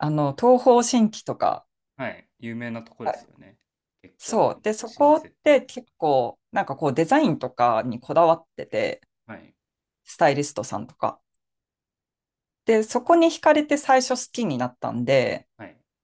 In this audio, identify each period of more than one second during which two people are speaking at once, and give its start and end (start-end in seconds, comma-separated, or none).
4.2-5.6